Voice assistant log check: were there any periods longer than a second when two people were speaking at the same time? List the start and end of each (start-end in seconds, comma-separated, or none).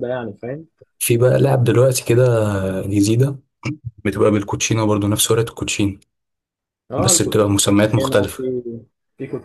7.0-8.4